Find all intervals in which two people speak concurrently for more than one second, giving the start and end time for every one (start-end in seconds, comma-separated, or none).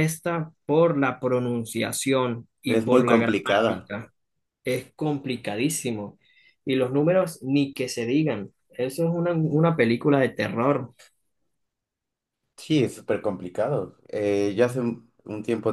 2.7-3.9